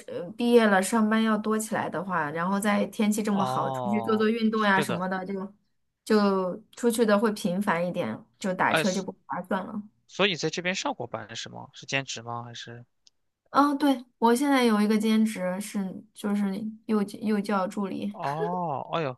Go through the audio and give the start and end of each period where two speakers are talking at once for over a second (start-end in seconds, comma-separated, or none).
3.3-5.0